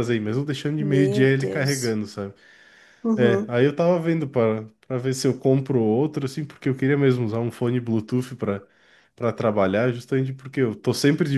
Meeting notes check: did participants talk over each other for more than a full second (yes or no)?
yes